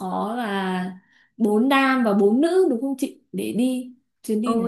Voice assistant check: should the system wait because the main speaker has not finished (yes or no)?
no